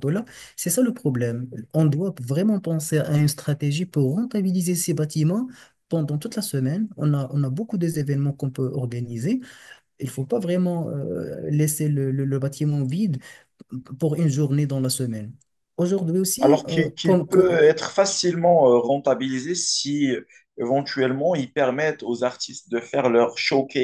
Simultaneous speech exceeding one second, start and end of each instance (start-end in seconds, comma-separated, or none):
16.4-17.6